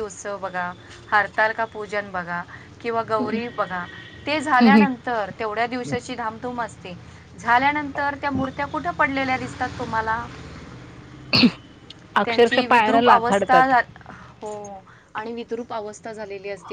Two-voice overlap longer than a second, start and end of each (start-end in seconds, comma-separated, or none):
12.2-13.7